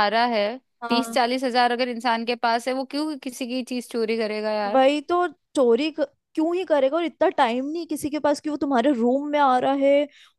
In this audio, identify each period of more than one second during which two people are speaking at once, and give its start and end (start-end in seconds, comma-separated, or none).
none